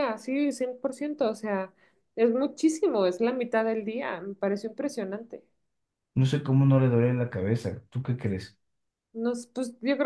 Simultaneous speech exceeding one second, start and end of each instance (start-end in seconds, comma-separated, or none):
none